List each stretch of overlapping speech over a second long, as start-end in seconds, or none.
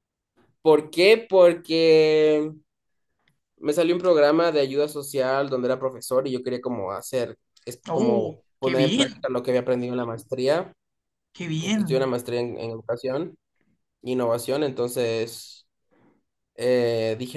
7.9-9.3